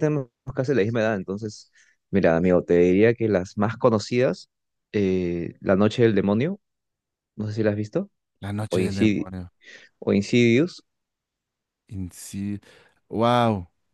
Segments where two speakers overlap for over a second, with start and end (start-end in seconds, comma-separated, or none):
none